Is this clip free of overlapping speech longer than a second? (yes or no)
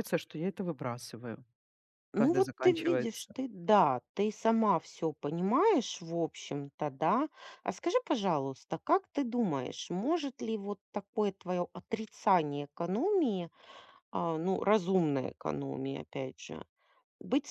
no